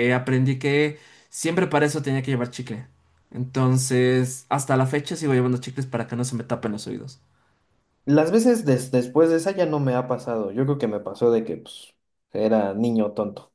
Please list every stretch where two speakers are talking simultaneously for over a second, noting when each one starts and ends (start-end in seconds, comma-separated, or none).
none